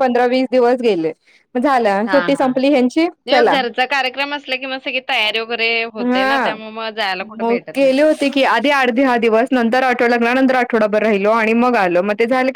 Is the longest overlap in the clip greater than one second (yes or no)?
no